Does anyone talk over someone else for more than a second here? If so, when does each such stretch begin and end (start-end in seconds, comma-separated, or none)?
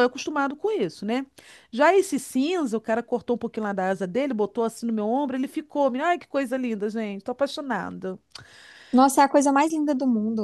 none